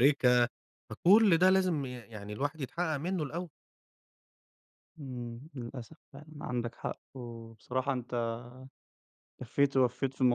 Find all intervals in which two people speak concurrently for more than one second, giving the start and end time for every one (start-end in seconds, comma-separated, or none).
none